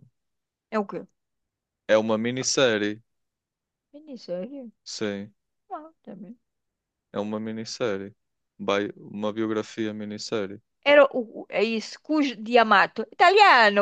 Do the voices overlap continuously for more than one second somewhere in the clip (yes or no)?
no